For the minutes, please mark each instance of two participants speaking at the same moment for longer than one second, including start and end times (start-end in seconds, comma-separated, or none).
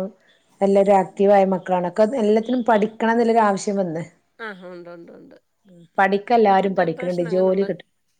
6.3-7.7